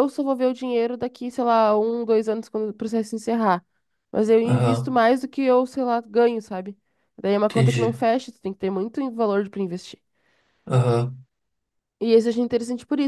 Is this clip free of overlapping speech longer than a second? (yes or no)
yes